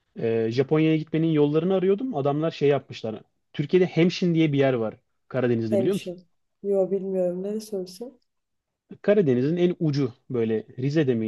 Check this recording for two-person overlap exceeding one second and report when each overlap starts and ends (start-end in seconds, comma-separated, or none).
none